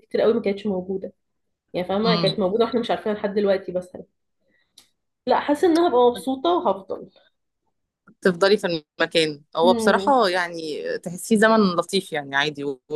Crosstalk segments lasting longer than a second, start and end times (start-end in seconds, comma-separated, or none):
none